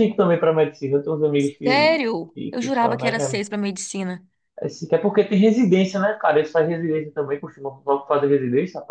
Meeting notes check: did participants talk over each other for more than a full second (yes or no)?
yes